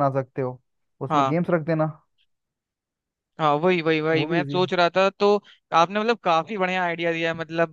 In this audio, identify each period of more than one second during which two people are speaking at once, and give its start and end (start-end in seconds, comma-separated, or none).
none